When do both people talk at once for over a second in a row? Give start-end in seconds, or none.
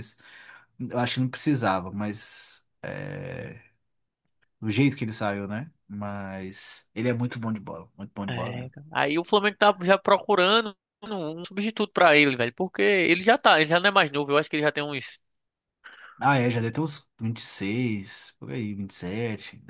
none